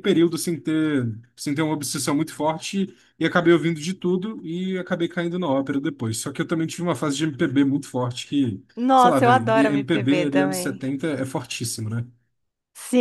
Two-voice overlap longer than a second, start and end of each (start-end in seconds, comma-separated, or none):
8.8-10.8